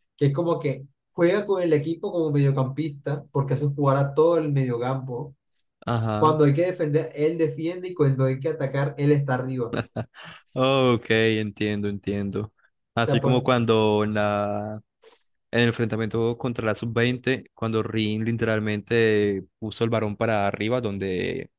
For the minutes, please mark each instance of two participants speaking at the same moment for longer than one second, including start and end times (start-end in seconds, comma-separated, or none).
none